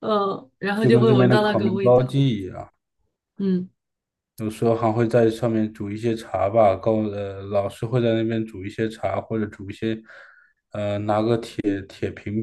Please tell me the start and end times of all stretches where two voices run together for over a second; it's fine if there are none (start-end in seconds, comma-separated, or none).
0.8-2.0